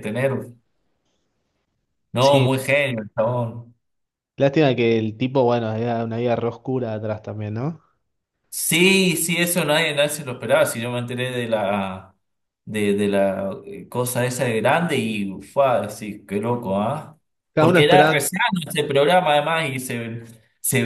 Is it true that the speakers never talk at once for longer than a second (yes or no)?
yes